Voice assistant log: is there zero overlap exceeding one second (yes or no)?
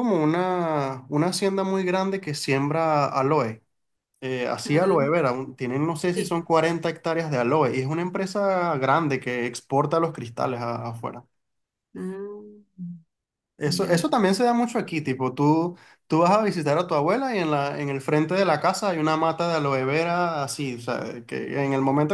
yes